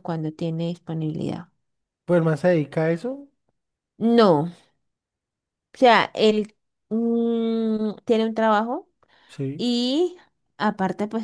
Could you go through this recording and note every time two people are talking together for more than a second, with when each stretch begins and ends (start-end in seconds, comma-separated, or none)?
none